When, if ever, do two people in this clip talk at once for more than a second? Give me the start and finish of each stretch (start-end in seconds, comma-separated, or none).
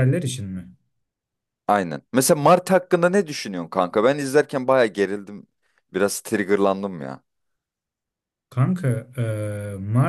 none